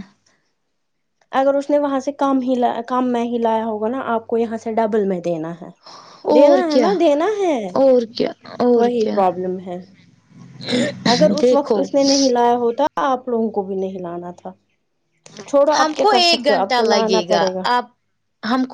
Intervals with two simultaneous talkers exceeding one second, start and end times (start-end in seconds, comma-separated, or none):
15.8-17.5